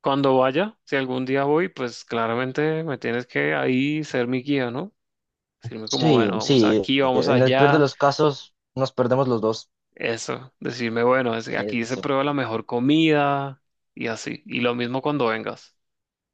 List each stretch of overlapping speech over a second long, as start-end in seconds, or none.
5.8-7.9